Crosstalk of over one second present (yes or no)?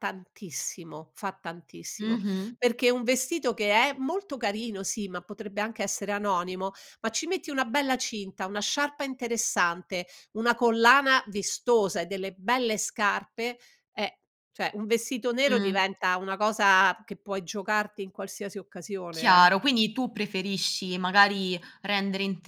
no